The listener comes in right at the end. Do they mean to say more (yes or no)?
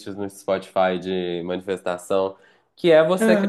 no